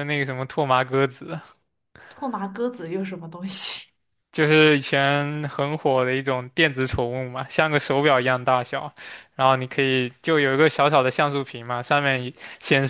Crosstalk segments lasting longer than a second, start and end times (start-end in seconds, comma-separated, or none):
none